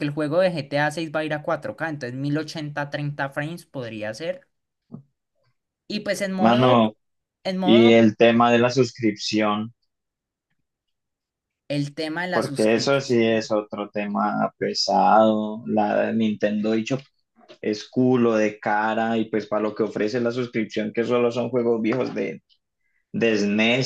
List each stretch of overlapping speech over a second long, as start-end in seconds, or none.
12.3-13.5